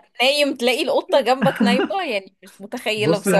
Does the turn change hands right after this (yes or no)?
yes